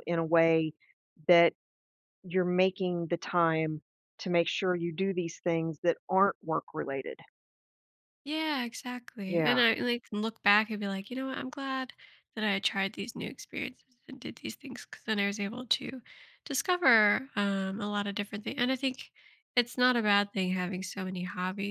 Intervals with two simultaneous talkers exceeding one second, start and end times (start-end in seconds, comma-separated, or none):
none